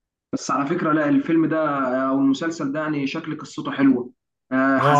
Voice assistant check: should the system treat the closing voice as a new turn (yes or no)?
yes